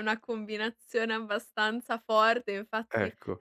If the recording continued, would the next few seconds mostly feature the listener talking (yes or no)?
no